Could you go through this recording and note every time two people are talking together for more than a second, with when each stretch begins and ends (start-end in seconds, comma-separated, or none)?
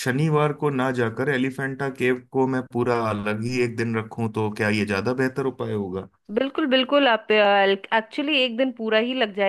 none